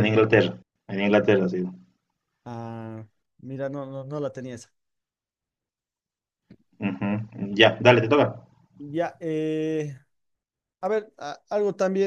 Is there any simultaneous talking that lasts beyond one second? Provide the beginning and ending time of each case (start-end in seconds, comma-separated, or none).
none